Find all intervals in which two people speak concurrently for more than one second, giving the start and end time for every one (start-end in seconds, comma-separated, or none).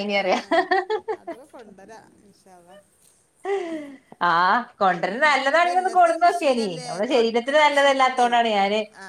5.6-8.3